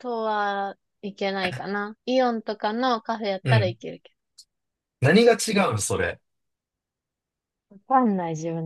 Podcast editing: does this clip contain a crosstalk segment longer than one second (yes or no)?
no